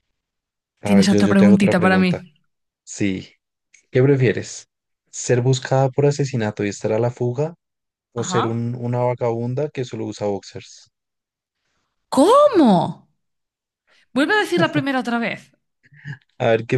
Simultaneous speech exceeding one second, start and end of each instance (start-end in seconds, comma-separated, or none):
0.8-2.2